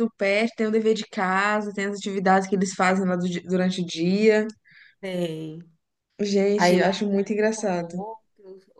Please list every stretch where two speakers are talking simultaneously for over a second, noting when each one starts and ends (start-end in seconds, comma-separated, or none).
6.5-8.0